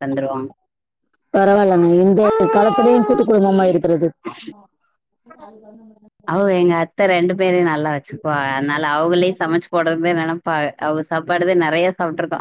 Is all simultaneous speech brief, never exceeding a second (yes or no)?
yes